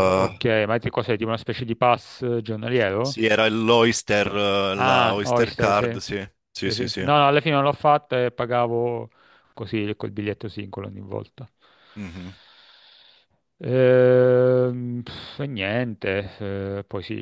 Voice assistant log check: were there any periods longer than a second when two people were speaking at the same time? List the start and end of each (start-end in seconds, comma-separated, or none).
4.8-6.0